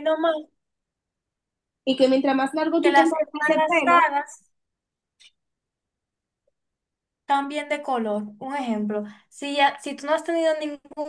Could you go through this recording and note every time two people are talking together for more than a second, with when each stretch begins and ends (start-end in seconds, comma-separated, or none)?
2.8-4.0